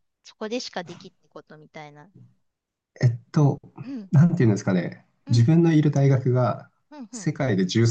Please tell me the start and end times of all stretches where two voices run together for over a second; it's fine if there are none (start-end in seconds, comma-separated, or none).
none